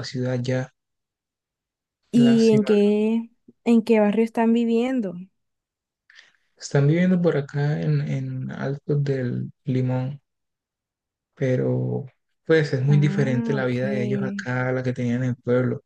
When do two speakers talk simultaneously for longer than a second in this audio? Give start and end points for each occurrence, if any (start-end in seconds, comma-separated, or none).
12.9-14.5